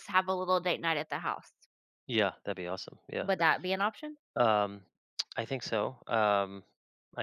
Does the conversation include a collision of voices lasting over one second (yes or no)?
no